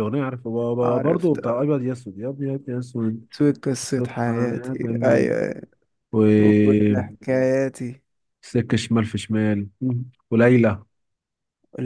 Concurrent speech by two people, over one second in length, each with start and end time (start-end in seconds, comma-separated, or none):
3.8-5.3